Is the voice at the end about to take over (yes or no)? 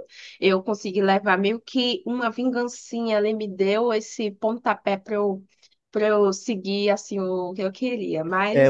yes